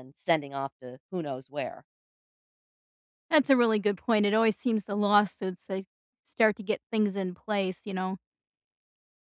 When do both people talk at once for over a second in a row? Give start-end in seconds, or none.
none